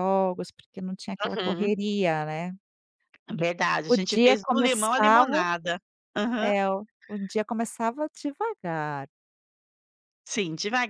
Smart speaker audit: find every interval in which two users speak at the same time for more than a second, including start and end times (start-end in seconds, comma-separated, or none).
3.9-5.5